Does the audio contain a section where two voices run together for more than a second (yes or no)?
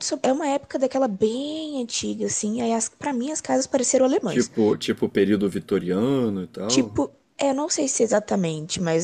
no